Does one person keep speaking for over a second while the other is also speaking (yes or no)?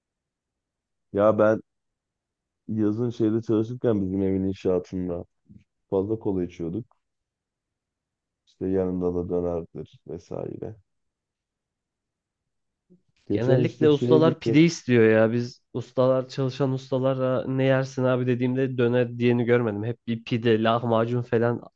yes